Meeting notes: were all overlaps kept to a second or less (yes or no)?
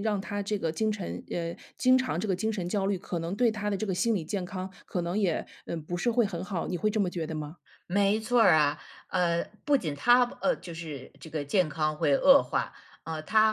yes